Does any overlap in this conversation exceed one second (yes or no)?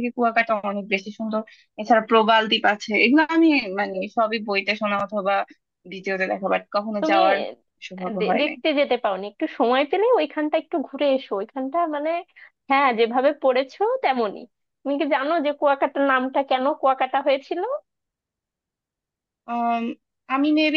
no